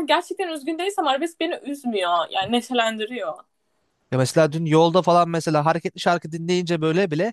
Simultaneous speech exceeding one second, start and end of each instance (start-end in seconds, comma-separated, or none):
none